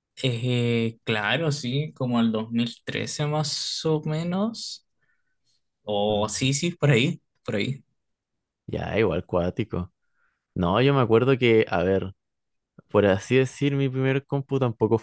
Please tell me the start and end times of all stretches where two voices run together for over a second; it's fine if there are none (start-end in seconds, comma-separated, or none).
none